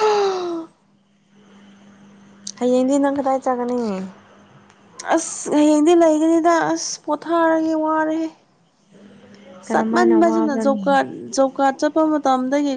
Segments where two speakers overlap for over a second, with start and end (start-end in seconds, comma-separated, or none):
9.7-11.1